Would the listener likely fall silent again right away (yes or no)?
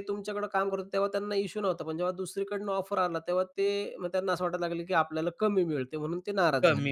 no